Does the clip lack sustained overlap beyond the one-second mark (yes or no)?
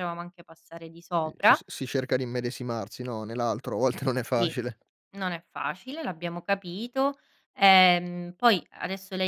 yes